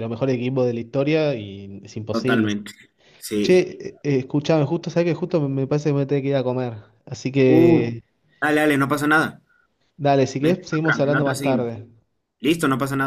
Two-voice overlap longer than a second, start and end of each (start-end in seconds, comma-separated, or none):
10.4-11.7